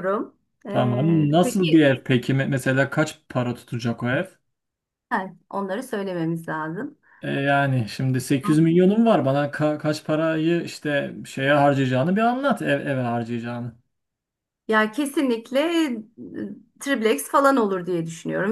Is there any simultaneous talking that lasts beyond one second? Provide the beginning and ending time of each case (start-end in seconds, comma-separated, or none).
0.7-1.9